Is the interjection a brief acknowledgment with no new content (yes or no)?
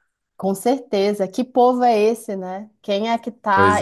yes